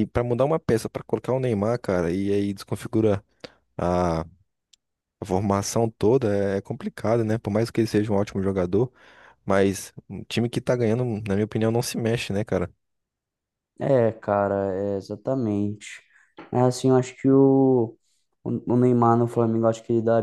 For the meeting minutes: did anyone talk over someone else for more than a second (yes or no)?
no